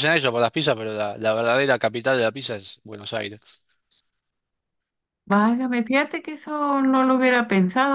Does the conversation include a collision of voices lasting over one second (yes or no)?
no